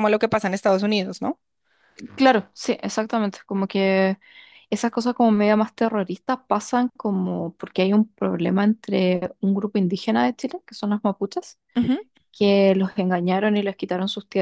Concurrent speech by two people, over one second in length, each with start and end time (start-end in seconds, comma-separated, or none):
none